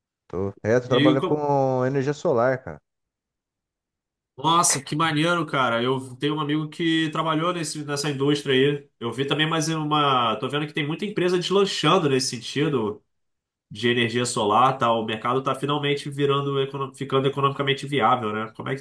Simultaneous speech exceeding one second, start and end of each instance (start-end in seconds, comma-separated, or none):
none